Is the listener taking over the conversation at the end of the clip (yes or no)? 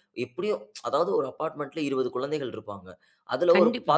no